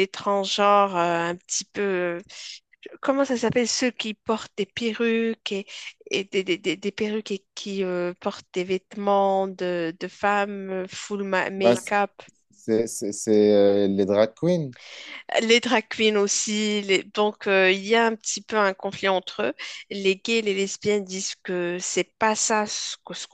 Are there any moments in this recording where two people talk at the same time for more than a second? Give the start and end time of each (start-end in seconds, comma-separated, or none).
none